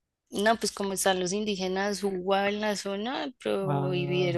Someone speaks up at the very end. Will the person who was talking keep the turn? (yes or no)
yes